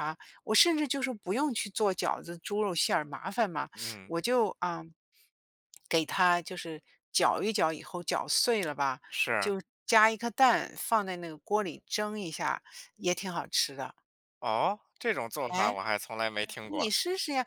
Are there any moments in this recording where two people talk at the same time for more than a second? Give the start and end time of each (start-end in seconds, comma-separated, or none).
none